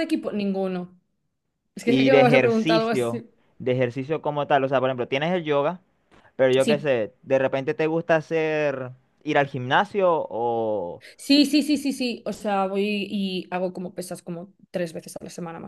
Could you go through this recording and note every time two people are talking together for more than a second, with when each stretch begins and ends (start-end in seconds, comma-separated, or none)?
1.8-3.3